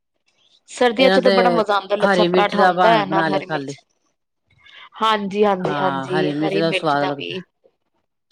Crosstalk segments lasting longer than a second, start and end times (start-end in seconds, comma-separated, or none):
2.0-3.8